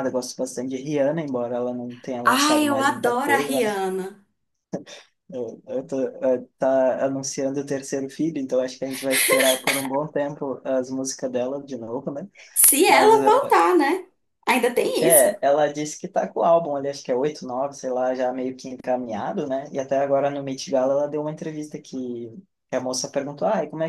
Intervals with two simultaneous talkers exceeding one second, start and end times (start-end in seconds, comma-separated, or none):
2.3-3.8